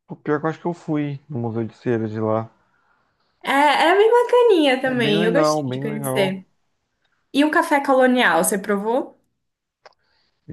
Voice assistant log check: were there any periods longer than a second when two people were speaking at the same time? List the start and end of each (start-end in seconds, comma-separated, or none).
4.8-6.5